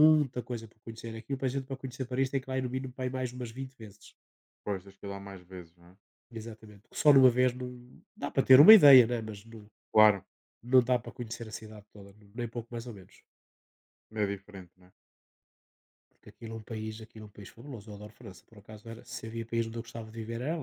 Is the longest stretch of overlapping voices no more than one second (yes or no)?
yes